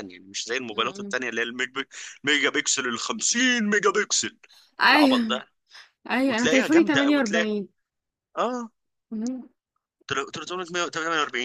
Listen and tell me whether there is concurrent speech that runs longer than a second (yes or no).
yes